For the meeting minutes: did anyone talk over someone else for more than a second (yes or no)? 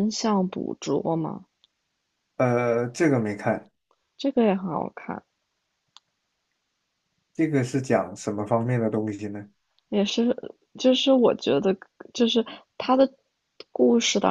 no